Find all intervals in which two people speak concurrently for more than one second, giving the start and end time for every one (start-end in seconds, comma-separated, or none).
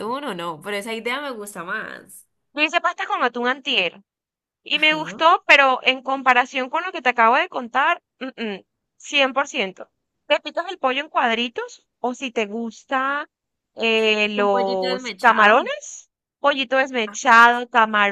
14.4-15.7